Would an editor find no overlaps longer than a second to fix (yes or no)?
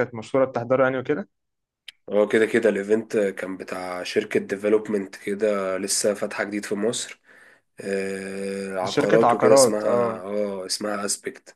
no